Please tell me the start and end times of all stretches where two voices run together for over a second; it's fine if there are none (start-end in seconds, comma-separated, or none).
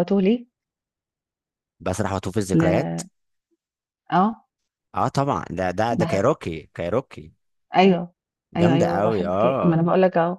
8.6-9.8